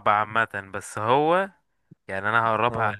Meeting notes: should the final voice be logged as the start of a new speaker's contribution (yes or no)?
no